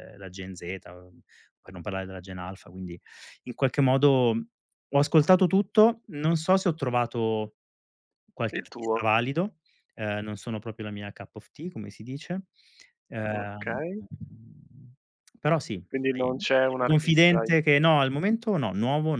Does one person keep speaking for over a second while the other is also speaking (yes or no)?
yes